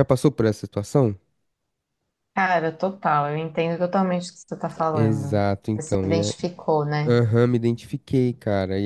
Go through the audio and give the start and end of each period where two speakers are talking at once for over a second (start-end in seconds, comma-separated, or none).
4.9-6.3